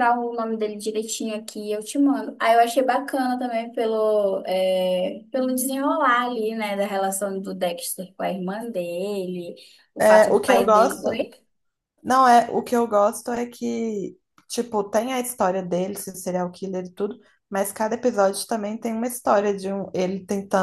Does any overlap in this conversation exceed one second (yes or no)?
yes